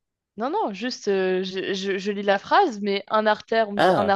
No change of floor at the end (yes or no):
yes